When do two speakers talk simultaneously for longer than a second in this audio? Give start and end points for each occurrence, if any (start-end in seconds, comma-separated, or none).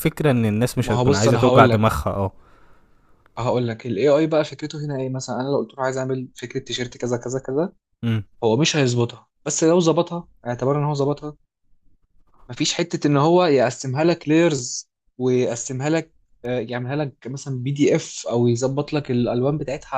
0.8-2.0